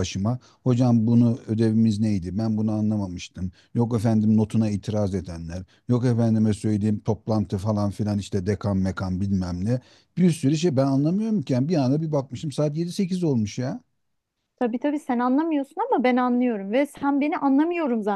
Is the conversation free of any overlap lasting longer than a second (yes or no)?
yes